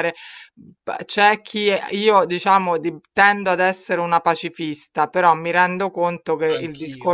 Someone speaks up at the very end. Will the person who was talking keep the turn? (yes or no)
yes